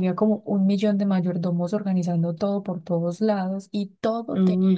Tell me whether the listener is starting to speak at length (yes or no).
no